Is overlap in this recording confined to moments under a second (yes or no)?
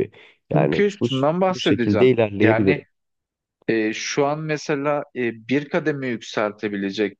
no